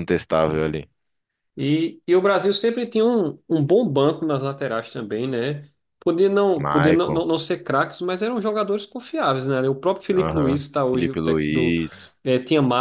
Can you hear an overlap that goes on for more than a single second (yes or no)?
yes